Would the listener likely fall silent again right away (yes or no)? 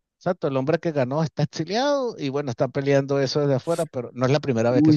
no